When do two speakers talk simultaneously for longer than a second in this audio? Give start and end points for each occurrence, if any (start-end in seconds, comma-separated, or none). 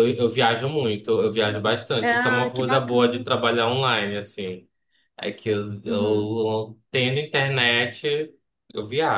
2.0-3.2